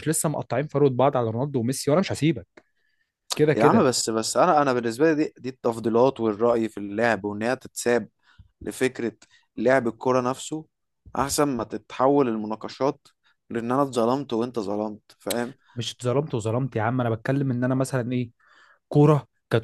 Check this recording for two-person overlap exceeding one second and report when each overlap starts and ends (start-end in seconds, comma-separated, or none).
none